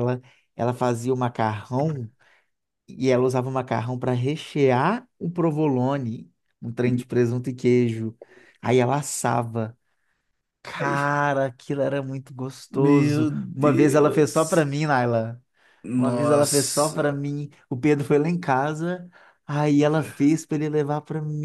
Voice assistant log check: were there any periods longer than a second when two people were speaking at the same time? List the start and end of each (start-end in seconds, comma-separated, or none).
12.7-14.7, 16.0-17.2